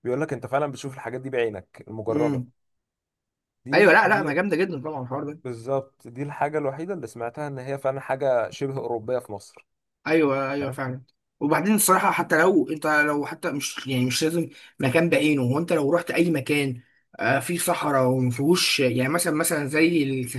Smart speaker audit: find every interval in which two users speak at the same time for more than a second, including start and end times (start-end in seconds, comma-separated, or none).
none